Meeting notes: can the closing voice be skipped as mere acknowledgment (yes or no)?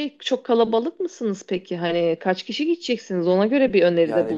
no